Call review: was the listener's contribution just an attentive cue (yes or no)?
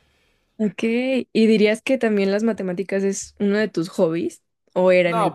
no